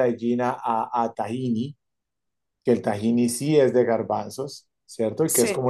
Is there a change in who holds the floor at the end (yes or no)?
no